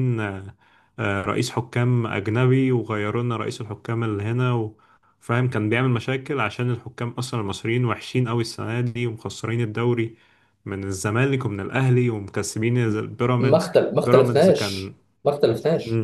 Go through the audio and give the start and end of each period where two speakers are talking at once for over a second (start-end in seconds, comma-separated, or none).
13.4-14.9